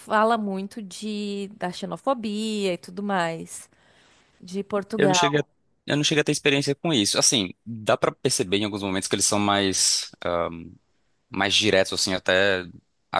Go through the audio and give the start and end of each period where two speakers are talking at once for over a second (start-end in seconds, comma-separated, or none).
none